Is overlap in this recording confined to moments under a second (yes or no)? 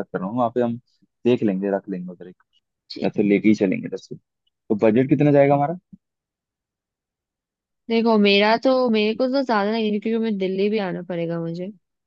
yes